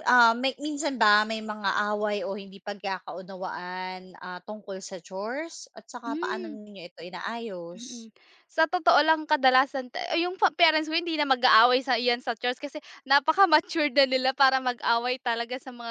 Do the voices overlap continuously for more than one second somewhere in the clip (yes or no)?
no